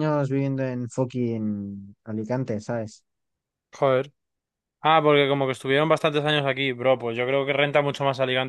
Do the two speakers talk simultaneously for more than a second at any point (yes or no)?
no